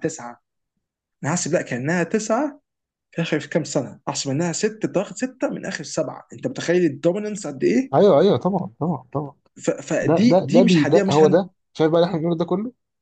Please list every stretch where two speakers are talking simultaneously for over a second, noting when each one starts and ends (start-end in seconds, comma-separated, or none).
10.0-11.5